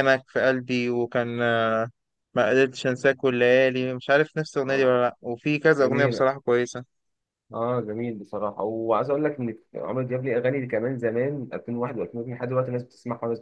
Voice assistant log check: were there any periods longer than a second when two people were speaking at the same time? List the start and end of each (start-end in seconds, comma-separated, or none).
none